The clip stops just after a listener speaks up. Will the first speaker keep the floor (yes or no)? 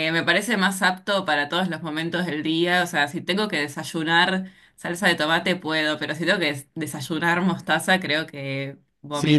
no